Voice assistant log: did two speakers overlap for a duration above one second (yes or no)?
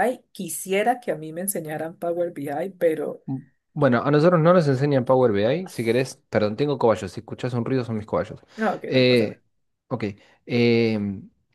no